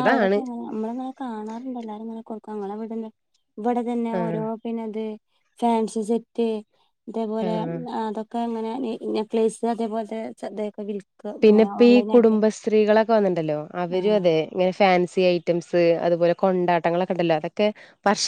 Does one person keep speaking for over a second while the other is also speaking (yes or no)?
no